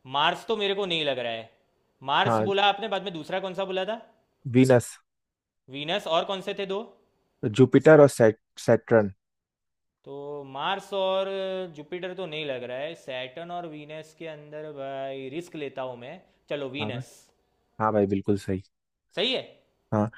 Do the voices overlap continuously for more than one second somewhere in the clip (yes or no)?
no